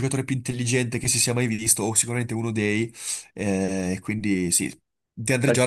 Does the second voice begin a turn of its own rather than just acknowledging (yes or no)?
no